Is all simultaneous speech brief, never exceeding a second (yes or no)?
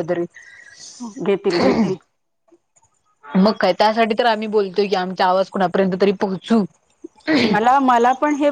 yes